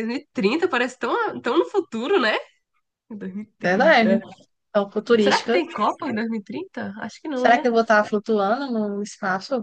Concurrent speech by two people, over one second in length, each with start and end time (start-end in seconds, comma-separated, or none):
none